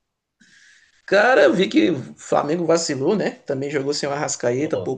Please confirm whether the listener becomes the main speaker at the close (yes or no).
no